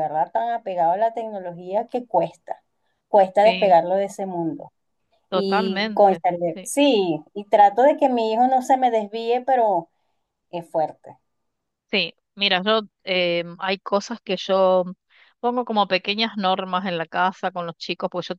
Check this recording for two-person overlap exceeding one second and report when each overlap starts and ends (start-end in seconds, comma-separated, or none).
5.3-6.7